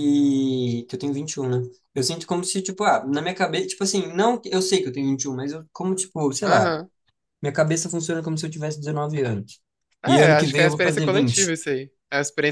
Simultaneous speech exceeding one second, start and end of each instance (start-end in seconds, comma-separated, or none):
10.1-11.5